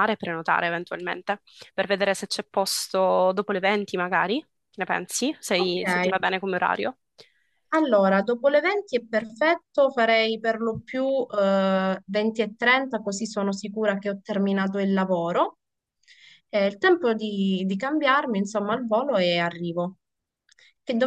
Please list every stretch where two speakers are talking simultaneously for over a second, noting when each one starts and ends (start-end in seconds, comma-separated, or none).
none